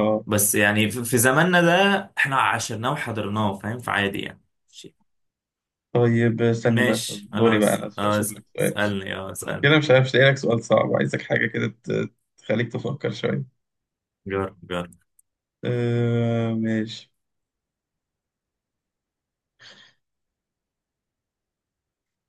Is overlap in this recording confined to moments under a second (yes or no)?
no